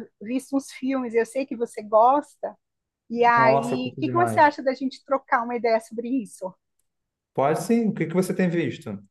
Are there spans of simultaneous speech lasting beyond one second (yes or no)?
yes